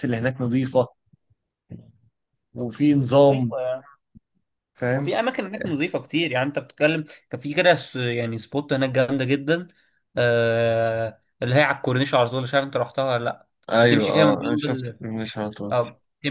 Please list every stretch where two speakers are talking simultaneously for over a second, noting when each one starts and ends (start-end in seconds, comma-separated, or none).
13.7-15.0